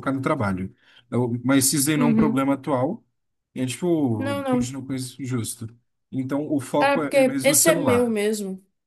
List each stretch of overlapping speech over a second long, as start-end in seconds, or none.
6.8-8.2